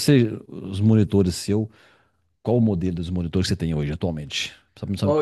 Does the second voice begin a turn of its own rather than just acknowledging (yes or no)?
yes